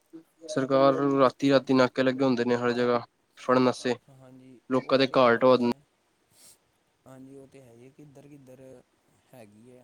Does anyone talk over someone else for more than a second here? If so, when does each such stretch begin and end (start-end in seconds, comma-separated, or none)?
none